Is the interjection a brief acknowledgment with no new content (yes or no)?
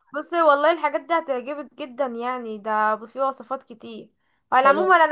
yes